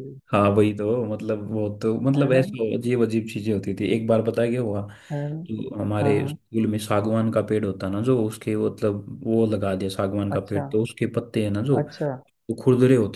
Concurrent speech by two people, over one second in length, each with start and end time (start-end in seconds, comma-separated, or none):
none